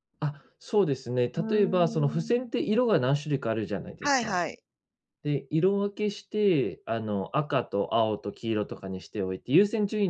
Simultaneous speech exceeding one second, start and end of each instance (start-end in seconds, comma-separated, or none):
1.4-2.6